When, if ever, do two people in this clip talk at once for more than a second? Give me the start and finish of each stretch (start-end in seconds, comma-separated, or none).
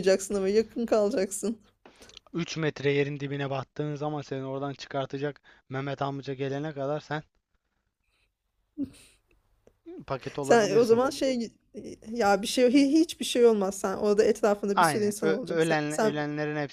14.7-16.1